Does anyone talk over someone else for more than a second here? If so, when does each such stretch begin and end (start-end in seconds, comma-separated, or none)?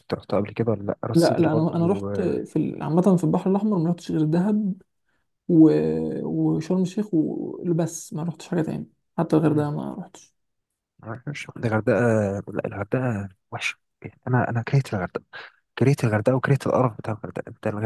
1.1-2.4